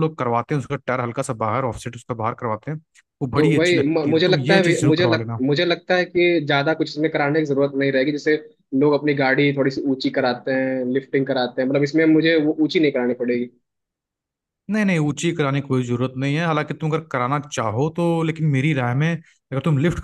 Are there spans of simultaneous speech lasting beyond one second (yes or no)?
yes